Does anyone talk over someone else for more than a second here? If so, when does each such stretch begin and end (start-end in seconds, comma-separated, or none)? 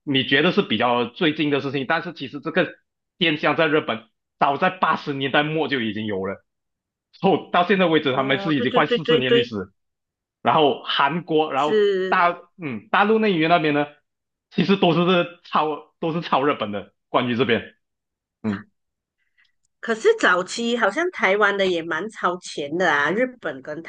8.1-9.5